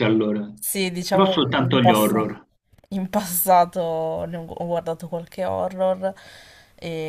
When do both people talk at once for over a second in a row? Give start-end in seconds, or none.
1.1-2.4